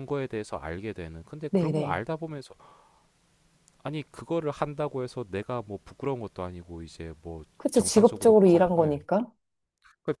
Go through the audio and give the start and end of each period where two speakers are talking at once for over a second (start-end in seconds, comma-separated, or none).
7.6-9.0